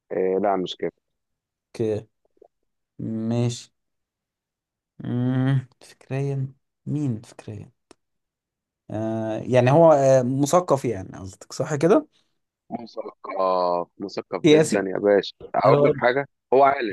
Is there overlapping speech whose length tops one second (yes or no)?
no